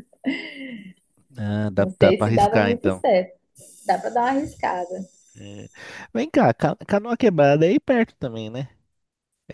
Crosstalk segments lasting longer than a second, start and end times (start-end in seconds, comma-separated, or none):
1.8-3.0